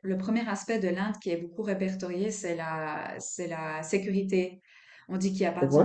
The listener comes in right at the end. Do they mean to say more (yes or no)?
no